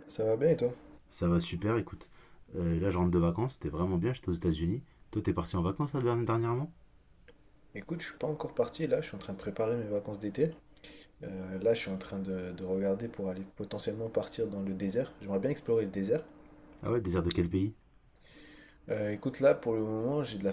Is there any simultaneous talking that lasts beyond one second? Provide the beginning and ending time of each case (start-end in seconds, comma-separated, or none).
none